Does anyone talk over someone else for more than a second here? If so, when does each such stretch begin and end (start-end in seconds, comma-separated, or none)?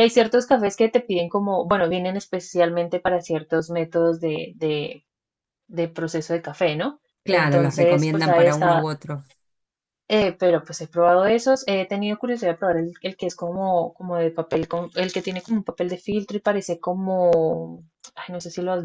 7.2-8.9